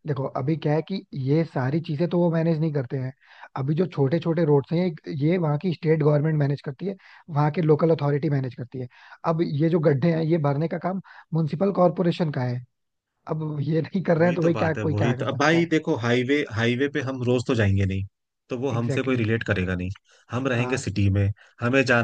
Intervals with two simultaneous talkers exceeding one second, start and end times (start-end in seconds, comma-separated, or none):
14.2-15.7